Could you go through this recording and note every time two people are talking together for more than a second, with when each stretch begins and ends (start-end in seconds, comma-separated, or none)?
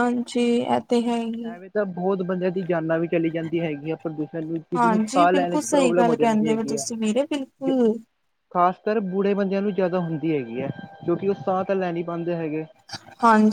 4.8-6.8